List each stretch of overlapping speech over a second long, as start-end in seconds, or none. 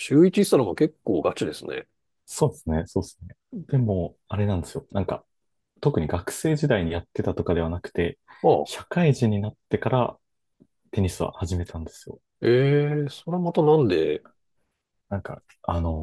none